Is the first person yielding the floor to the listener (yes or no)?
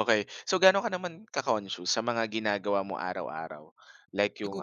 no